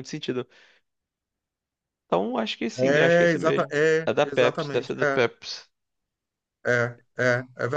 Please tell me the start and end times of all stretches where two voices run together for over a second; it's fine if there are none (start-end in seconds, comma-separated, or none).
2.8-5.2